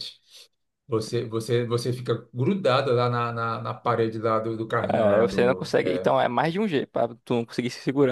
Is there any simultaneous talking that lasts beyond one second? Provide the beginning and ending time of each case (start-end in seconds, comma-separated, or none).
4.9-6.1